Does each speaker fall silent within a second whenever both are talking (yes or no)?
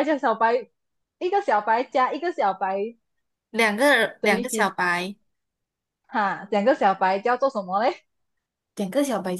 yes